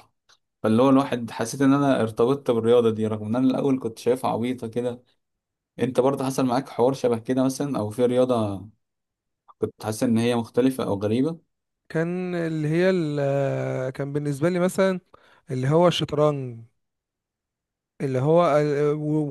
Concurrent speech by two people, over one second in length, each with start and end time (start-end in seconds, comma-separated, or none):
none